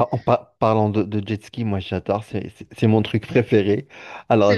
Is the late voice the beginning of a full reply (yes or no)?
no